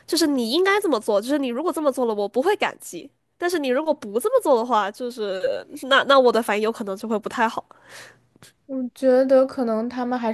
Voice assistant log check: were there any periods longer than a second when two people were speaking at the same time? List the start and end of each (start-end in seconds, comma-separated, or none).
none